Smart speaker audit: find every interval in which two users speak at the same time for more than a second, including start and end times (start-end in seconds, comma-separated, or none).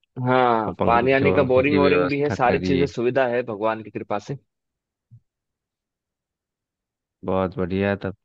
0.7-2.9